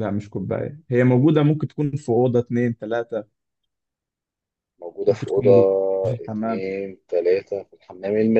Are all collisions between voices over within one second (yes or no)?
yes